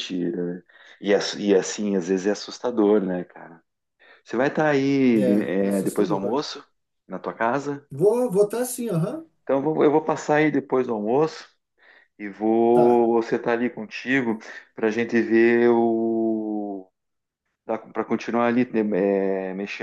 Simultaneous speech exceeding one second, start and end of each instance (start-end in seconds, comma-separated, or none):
5.1-6.4